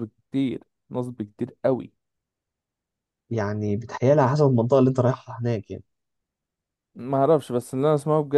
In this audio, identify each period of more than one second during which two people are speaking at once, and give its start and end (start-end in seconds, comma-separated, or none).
none